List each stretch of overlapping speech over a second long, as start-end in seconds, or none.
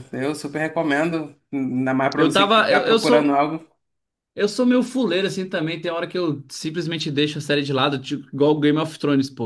2.1-3.4